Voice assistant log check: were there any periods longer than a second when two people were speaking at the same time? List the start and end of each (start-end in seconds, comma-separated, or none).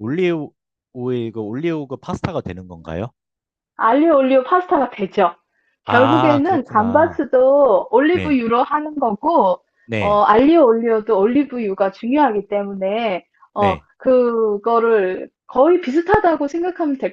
5.8-7.2